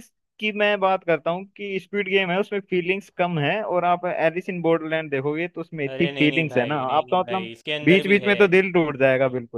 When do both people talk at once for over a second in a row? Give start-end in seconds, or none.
5.9-8.3